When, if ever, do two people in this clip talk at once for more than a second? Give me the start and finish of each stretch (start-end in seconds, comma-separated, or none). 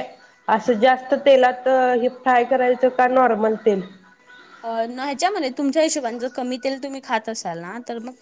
none